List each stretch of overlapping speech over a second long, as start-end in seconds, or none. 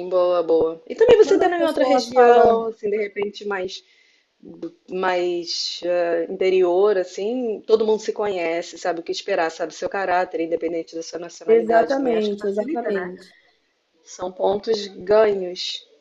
1.2-2.7, 11.5-13.1